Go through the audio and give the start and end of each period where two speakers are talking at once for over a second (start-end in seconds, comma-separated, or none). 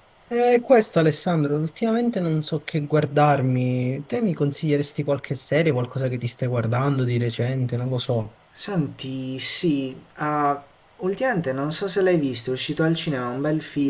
none